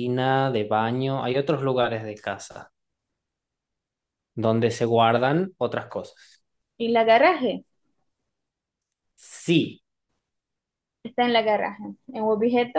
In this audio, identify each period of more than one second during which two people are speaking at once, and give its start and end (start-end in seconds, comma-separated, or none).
none